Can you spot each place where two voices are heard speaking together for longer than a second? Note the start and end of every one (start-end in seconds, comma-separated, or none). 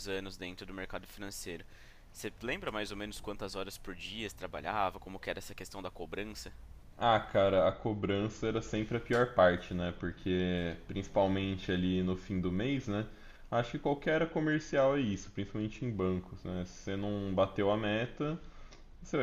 none